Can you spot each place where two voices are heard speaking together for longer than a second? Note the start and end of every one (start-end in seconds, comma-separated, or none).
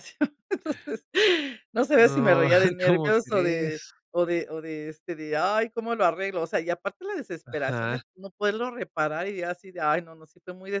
1.9-3.9